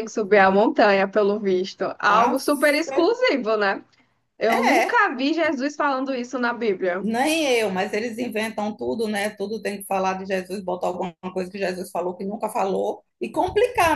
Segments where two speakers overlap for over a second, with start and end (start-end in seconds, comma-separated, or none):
none